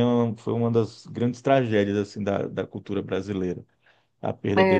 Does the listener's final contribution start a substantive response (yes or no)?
yes